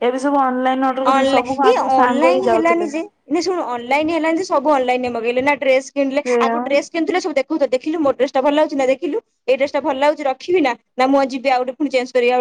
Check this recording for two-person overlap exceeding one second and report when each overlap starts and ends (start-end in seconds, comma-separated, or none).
1.1-2.9